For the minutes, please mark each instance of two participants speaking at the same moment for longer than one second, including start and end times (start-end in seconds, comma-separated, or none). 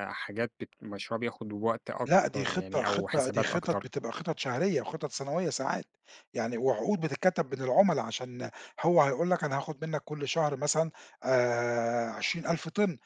2.0-3.9